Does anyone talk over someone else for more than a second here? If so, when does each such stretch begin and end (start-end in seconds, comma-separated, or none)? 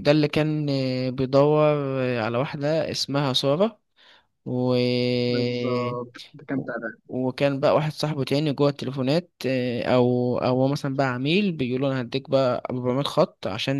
none